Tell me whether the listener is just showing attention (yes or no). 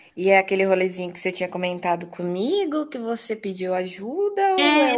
no